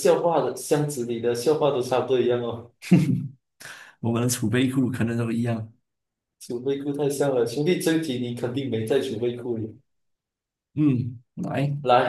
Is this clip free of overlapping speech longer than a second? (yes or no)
yes